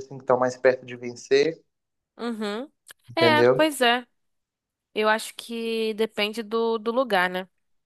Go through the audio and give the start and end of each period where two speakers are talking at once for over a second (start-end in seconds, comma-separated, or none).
none